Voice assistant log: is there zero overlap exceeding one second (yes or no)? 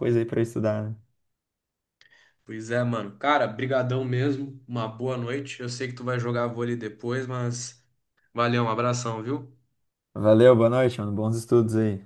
yes